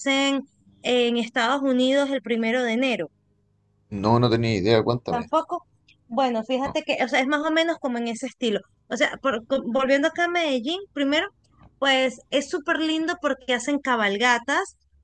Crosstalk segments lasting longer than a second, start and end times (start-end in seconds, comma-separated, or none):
none